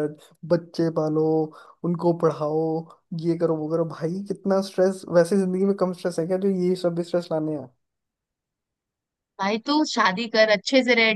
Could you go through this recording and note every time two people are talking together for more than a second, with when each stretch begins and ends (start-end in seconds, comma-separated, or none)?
none